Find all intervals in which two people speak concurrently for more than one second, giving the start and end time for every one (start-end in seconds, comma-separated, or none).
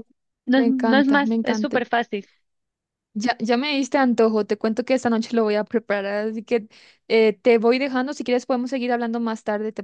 0.6-1.8